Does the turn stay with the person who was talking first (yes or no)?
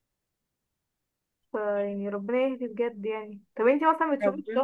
yes